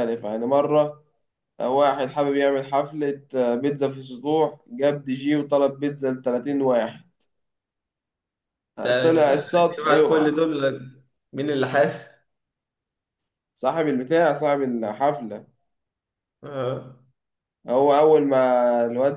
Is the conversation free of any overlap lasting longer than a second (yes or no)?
no